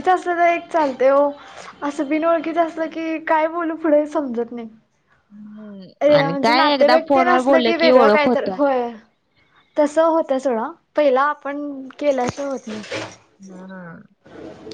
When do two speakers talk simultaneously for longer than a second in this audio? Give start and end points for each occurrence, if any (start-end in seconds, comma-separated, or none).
6.2-8.5